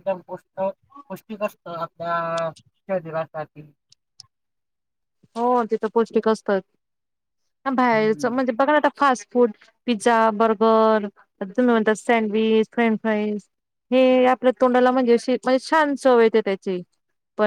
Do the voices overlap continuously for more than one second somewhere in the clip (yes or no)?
no